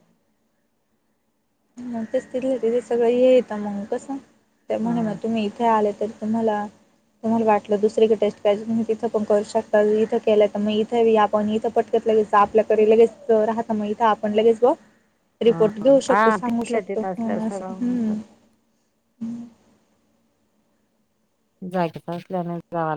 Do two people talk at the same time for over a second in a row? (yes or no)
yes